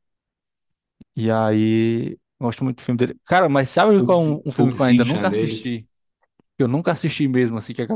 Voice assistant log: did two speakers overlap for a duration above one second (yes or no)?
yes